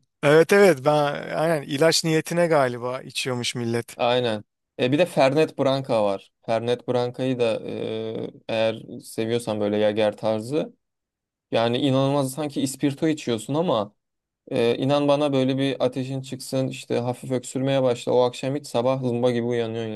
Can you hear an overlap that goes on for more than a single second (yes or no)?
no